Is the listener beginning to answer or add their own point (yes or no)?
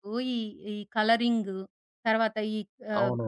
no